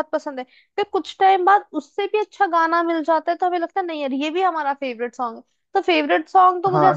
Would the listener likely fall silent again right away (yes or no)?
no